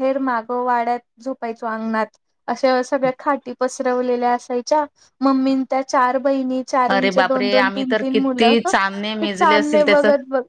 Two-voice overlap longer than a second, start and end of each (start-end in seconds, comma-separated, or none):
6.9-9.6